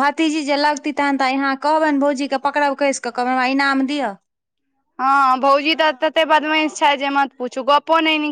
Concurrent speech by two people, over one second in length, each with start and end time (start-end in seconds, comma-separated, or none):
none